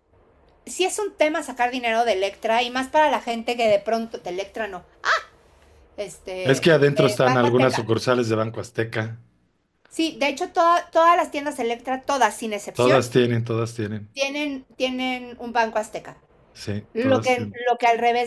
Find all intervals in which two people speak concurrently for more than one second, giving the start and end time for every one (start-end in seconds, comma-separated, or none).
6.4-7.8